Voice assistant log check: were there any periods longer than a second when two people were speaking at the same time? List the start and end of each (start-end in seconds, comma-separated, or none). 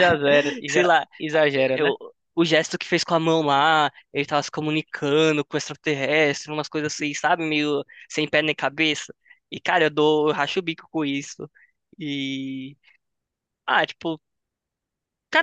none